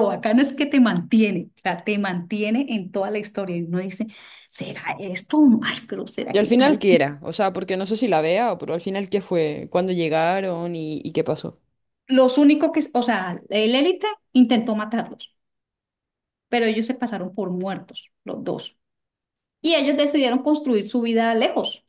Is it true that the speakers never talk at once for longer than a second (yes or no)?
yes